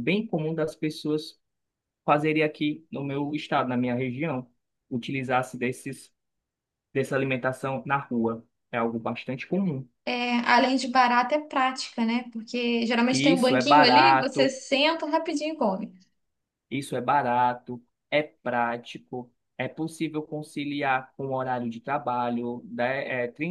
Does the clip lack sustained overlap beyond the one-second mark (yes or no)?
no